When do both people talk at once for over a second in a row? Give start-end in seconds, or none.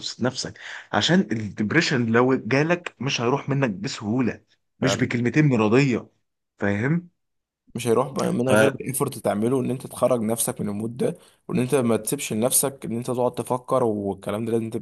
none